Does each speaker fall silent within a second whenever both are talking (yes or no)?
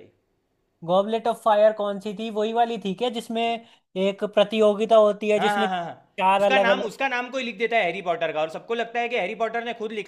no